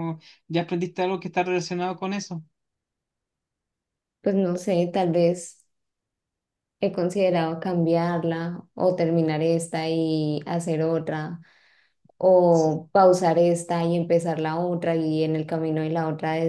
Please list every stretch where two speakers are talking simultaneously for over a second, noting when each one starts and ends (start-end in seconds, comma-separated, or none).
none